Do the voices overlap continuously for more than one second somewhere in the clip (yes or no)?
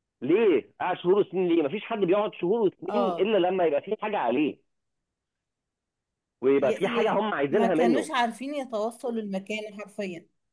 yes